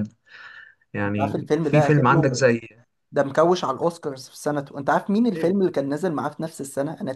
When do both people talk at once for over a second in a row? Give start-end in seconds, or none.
1.1-2.5